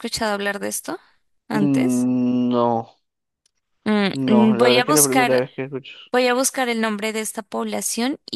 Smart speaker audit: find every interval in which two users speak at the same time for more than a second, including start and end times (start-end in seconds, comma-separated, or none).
4.1-5.5